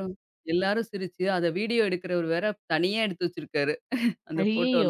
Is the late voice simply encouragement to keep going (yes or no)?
no